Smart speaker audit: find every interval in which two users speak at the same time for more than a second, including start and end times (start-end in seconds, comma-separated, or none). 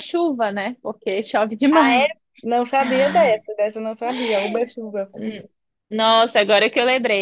none